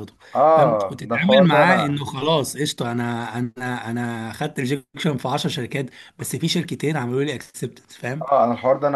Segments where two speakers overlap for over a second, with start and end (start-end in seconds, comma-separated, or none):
0.6-2.0